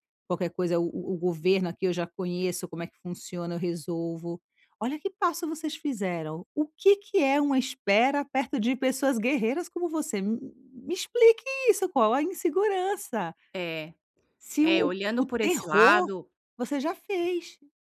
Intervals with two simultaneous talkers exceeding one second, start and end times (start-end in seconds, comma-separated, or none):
14.6-16.1